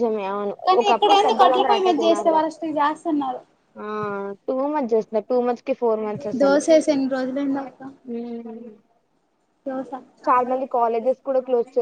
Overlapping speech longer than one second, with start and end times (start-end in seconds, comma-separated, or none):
0.7-2.5